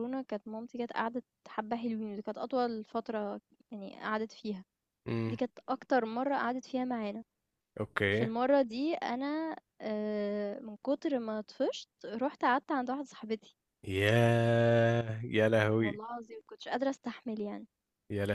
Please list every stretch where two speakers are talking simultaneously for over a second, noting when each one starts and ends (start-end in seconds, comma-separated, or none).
none